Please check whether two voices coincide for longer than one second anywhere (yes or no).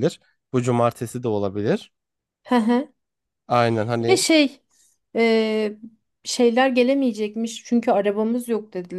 no